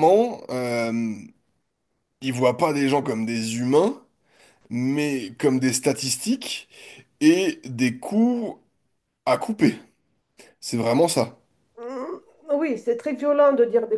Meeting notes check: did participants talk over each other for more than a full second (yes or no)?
no